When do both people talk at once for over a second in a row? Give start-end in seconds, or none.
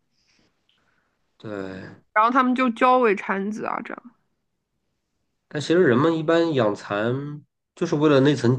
none